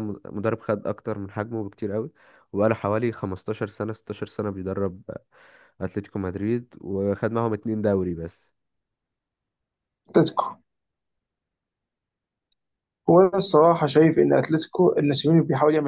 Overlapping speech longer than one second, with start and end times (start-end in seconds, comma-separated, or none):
none